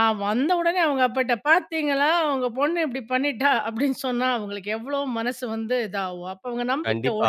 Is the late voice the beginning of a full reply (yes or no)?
yes